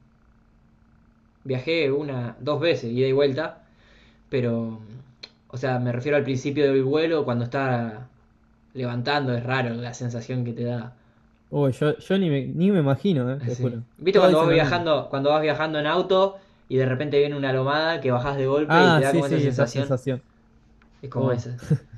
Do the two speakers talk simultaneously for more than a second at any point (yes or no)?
yes